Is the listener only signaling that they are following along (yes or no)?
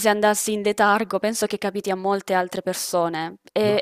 no